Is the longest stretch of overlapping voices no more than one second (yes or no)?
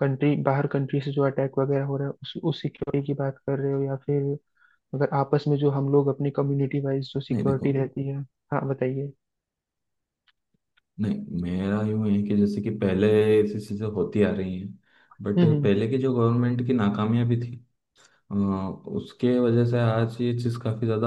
yes